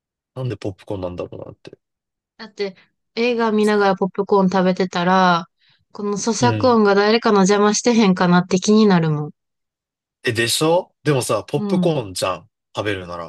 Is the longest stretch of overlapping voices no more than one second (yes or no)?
yes